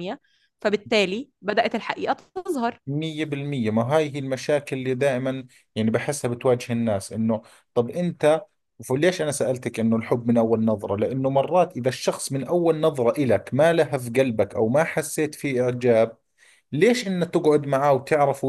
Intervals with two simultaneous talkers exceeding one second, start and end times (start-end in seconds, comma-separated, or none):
none